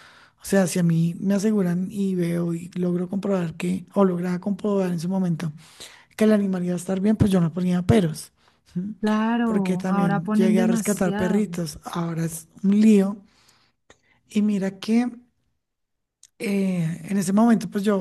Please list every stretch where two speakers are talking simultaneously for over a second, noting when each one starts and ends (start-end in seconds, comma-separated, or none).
9.4-11.5